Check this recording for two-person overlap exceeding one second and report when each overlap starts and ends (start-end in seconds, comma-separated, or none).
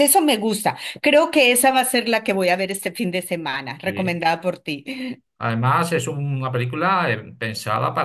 none